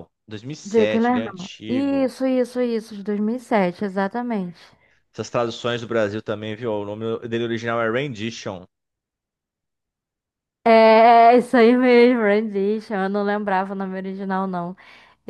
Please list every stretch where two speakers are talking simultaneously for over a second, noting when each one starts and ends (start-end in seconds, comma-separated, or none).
0.6-2.1